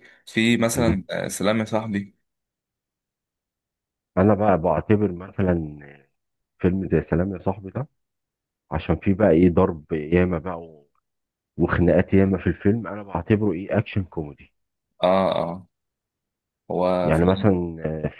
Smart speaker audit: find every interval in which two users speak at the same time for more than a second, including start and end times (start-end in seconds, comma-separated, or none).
none